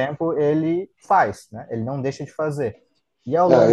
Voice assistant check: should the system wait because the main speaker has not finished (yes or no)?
no